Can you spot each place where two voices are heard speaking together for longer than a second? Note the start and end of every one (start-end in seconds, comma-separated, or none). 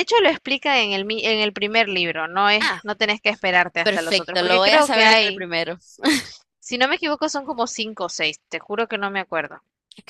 3.8-5.5